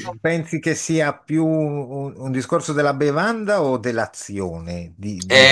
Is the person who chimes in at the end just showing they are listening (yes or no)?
no